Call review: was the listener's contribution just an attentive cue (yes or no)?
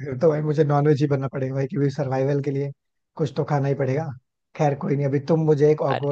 yes